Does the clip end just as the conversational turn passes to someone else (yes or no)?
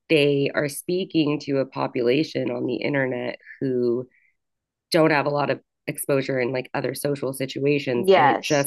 no